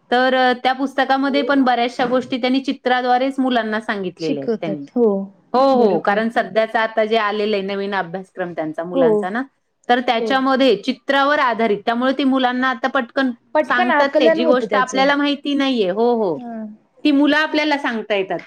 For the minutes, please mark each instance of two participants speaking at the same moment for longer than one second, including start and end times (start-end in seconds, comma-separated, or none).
13.7-15.0